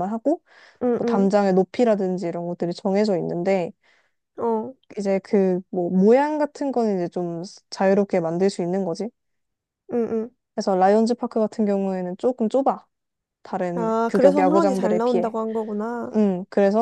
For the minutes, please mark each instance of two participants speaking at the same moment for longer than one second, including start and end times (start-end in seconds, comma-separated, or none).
13.8-15.3